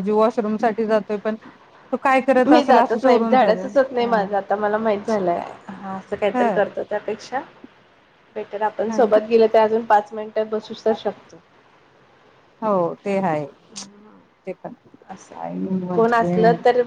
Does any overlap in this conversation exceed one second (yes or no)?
yes